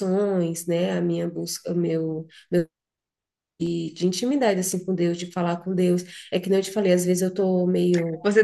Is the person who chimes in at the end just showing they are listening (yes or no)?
no